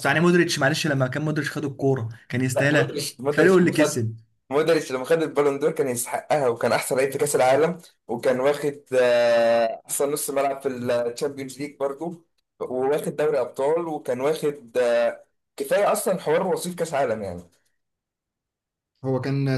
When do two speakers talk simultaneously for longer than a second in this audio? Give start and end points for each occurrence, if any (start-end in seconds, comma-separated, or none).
2.6-4.0